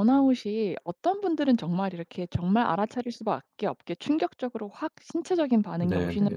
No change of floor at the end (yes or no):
yes